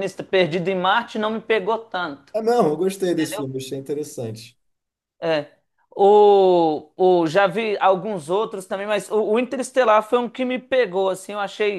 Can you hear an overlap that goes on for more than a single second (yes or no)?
no